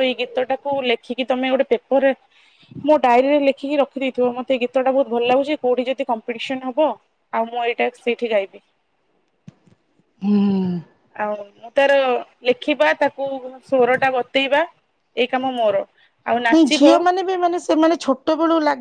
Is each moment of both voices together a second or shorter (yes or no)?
yes